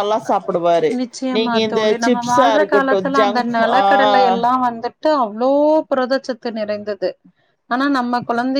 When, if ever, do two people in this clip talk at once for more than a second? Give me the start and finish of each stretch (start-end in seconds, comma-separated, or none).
1.3-3.8